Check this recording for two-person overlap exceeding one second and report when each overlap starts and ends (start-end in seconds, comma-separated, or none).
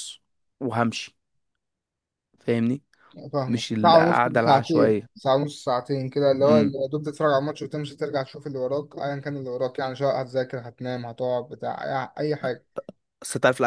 3.5-5.1